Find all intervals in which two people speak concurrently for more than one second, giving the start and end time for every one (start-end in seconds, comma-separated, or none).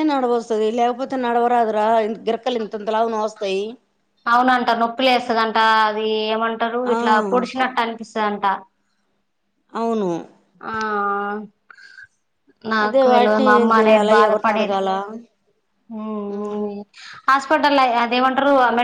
12.8-14.8